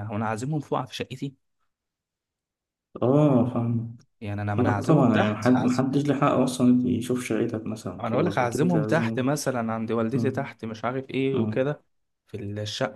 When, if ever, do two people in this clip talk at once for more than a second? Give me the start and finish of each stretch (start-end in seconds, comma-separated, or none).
4.6-5.8, 8.0-9.3